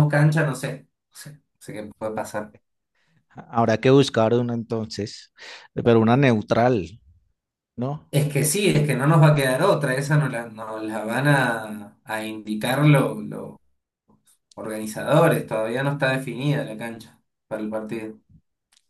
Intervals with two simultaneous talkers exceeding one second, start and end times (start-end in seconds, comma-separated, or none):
none